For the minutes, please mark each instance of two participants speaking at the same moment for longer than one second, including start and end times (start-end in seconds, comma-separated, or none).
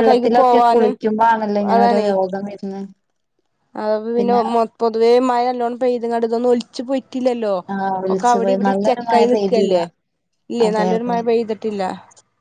8.1-9.8